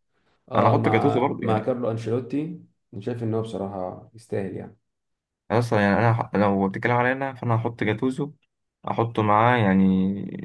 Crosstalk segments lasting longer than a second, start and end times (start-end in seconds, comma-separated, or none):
0.6-1.8